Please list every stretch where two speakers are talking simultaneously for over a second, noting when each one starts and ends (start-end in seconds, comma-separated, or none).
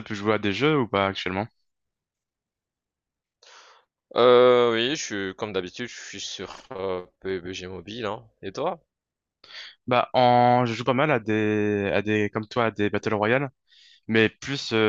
none